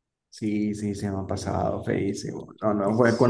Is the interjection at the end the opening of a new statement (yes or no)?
no